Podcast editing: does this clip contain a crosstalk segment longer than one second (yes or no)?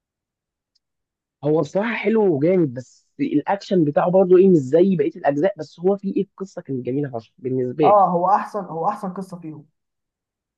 no